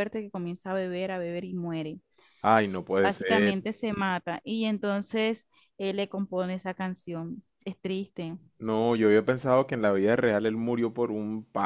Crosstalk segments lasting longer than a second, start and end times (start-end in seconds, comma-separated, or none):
none